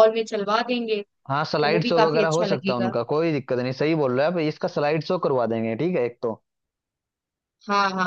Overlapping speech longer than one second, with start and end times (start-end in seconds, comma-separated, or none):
1.4-2.9